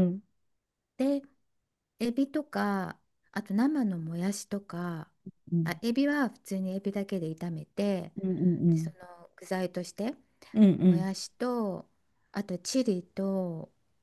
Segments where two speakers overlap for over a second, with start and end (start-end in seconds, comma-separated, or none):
none